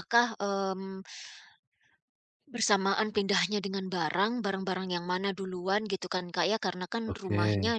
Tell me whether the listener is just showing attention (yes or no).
yes